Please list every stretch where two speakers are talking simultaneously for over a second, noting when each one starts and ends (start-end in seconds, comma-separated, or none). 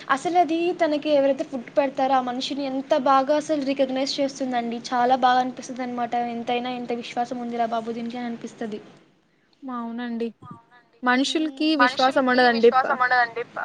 11.1-12.9